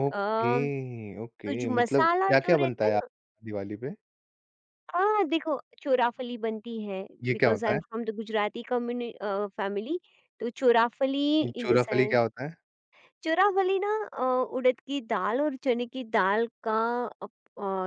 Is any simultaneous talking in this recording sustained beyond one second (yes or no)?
yes